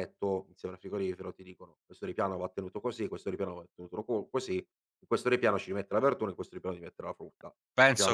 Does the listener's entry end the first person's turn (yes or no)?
yes